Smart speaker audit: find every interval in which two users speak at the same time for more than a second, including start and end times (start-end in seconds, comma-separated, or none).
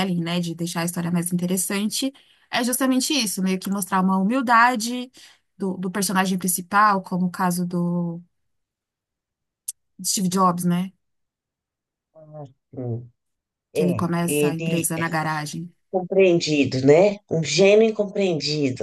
13.7-15.0